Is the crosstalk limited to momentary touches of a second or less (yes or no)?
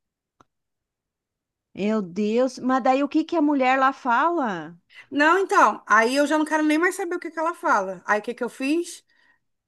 yes